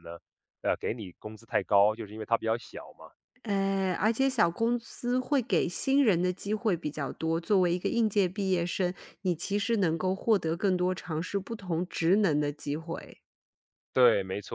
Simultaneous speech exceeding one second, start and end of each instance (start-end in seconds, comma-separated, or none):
none